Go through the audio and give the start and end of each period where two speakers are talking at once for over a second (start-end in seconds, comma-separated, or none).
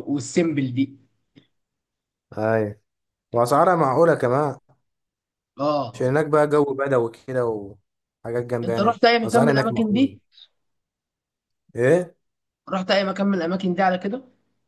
8.6-10.2